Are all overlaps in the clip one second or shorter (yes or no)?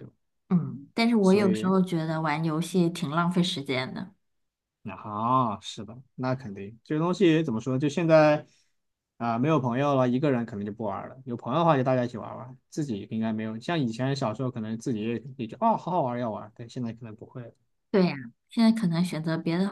yes